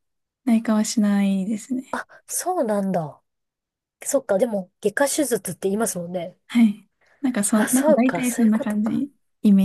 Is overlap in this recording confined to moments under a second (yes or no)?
no